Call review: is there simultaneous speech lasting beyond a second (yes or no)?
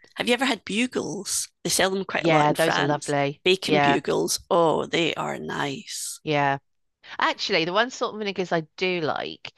yes